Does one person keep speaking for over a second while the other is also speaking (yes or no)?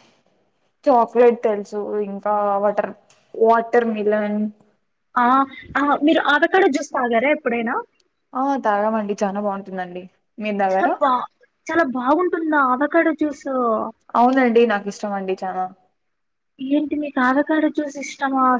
no